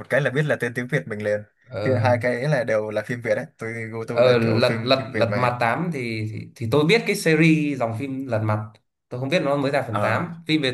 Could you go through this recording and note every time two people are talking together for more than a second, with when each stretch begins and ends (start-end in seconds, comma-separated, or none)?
4.1-5.5